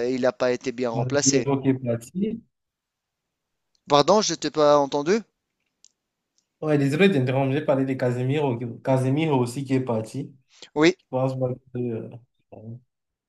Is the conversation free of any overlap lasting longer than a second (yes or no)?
yes